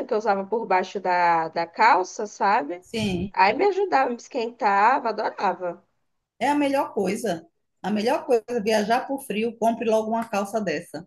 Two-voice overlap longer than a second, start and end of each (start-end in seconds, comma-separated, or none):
none